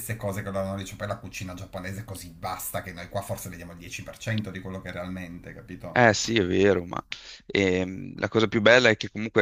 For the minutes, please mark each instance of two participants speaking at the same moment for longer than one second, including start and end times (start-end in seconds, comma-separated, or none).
none